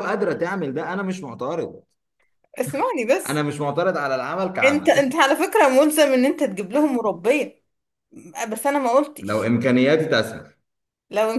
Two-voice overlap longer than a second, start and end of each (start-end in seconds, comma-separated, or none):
none